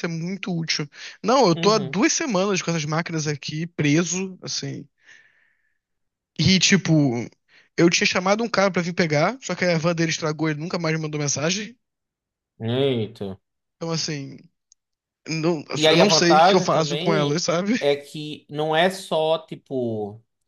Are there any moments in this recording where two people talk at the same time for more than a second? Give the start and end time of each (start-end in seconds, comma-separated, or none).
15.8-17.4